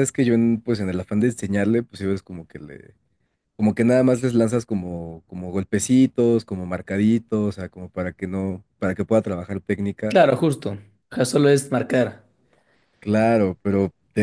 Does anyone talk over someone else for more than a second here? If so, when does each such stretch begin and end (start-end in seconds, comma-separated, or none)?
none